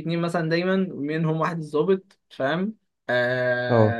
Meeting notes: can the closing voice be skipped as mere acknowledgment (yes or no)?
yes